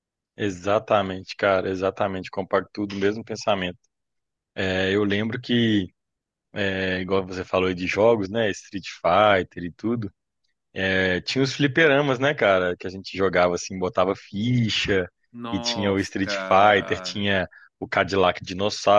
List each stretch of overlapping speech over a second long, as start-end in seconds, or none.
15.5-17.2